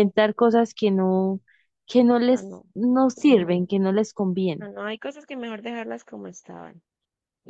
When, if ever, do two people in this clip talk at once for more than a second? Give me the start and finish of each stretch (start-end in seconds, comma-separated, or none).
none